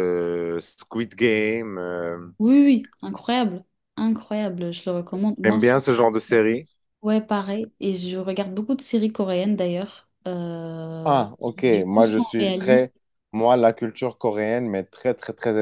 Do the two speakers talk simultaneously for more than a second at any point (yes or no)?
yes